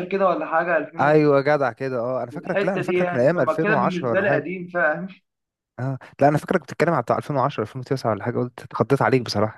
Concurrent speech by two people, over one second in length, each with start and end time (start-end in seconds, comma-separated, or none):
2.3-4.5